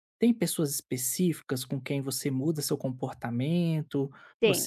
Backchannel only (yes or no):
yes